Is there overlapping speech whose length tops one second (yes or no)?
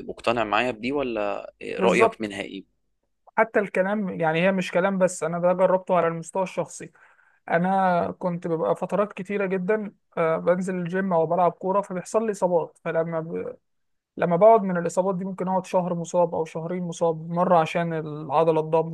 no